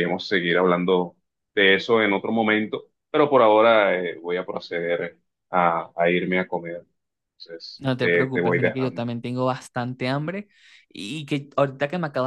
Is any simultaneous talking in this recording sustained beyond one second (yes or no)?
yes